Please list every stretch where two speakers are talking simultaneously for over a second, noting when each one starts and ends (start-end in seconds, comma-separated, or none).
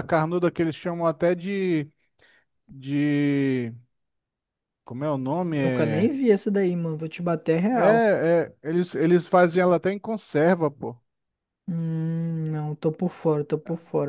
none